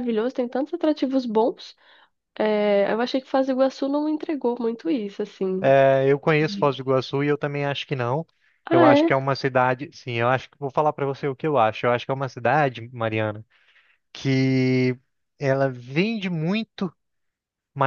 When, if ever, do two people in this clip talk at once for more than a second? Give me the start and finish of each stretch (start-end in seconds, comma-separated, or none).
none